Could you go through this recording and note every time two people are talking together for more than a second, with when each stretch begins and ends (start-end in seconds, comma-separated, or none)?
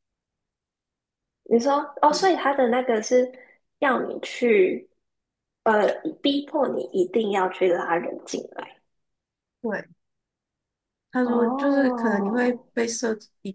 11.2-12.6